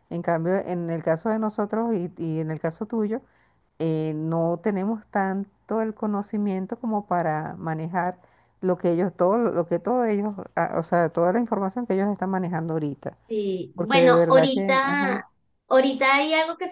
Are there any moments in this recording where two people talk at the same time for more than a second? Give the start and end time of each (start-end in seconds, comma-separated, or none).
13.7-15.2